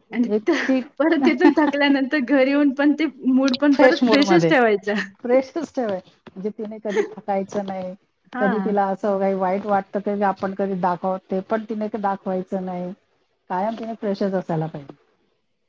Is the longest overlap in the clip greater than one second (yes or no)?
no